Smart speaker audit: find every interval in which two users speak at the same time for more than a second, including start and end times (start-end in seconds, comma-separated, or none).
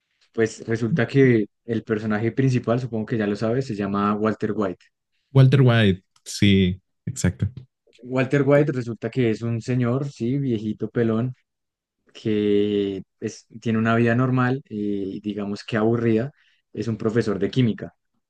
none